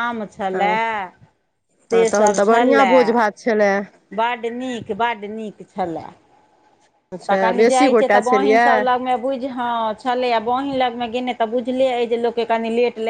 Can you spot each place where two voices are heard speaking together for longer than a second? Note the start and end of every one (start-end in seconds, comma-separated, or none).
7.3-8.8